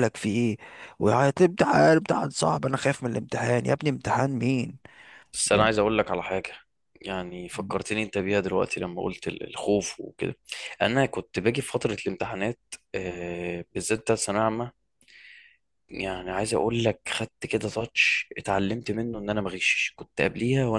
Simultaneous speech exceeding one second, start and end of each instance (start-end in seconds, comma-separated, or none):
none